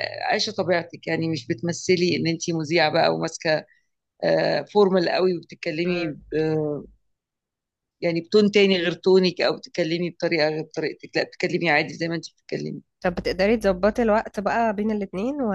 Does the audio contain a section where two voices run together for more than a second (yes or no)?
no